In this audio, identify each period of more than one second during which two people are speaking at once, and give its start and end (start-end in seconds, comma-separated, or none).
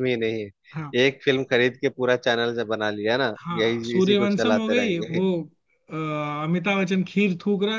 3.4-5.2